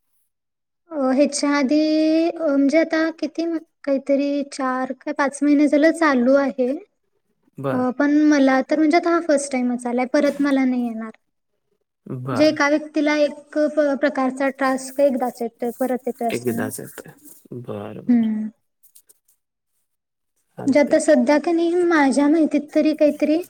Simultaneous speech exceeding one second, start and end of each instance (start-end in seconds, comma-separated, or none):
none